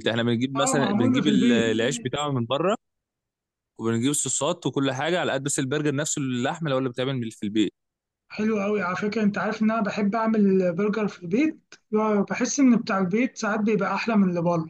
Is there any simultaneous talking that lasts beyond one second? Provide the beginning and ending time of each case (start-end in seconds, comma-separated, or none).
0.6-1.8